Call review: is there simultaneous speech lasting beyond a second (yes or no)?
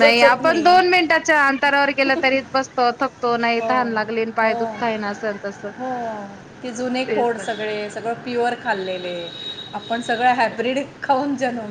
no